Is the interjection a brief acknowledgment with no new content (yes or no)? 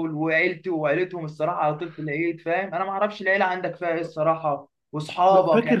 yes